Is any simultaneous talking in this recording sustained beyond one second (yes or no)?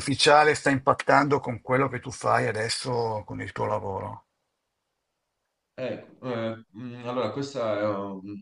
no